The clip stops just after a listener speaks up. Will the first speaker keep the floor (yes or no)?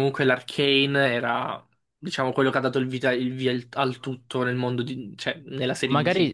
no